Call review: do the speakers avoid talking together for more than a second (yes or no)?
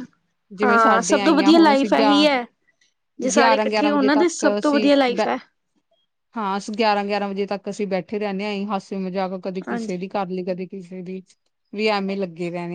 no